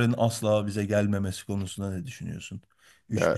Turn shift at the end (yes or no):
no